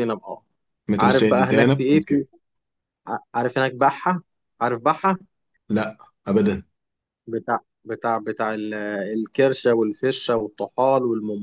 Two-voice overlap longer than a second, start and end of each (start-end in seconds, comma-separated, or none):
1.0-2.2